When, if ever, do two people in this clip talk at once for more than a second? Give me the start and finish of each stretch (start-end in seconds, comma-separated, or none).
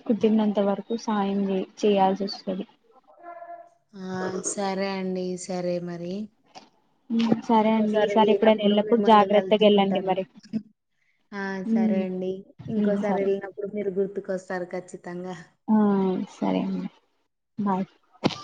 7.6-10.1